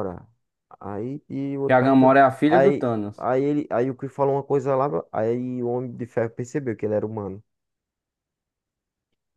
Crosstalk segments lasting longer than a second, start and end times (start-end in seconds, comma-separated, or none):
1.6-3.3